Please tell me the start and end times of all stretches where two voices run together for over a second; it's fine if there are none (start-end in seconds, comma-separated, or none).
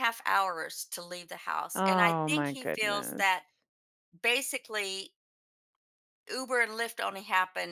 1.7-3.2